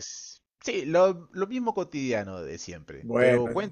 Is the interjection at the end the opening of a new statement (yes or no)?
no